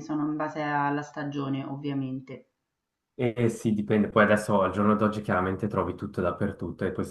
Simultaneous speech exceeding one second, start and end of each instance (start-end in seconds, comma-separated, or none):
none